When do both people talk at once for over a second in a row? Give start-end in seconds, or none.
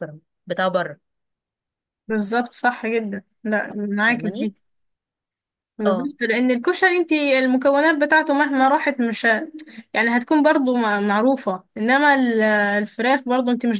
none